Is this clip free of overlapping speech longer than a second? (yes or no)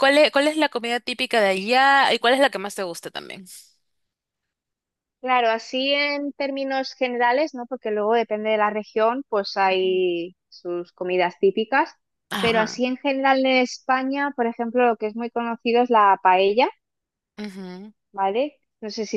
yes